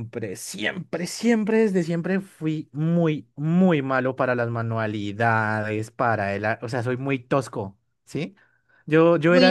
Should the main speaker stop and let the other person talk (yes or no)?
yes